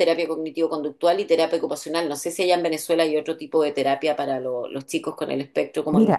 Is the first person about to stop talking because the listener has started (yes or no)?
yes